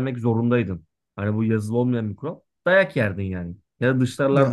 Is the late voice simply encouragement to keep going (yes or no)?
yes